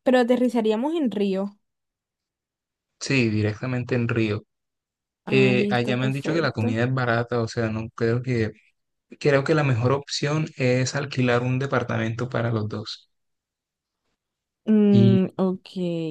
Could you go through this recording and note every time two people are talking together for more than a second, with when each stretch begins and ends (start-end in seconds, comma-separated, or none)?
5.3-6.8